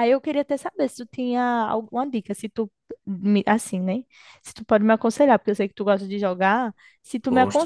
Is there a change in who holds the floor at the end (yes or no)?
no